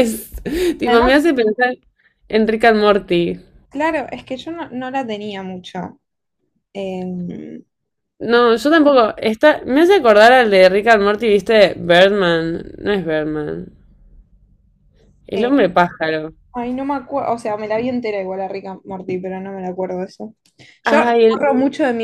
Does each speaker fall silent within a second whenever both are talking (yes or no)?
yes